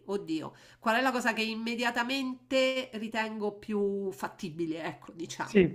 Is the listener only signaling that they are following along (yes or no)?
no